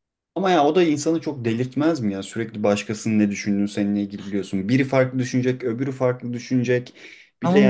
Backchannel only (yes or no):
no